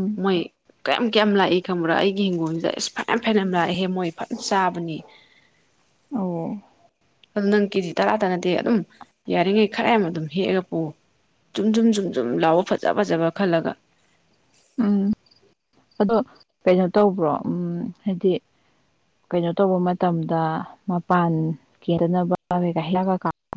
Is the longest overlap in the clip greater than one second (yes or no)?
no